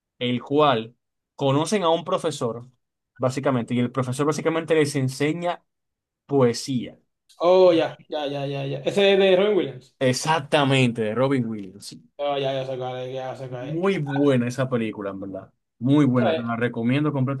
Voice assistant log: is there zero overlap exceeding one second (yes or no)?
yes